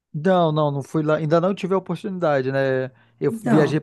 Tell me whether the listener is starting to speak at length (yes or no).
no